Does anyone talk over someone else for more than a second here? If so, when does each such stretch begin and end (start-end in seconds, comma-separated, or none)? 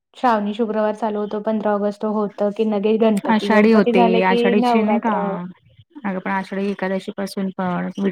3.3-5.1